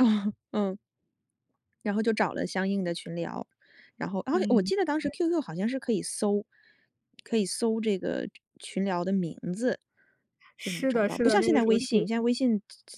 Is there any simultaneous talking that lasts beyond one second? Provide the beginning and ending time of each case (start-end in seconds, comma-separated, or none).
10.6-11.8